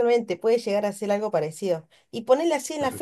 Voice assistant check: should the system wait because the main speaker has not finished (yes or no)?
yes